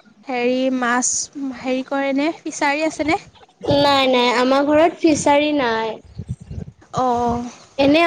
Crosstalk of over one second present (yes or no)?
no